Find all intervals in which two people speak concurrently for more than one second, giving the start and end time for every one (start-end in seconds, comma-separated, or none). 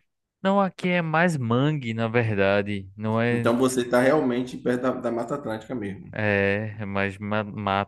none